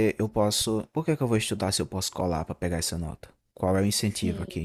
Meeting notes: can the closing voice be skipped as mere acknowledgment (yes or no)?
yes